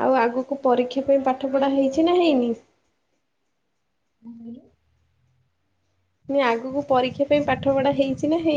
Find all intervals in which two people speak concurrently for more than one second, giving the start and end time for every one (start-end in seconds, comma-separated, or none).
0.6-2.5